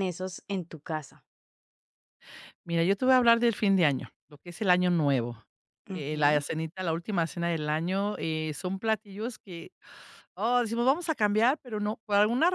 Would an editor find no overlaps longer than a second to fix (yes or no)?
yes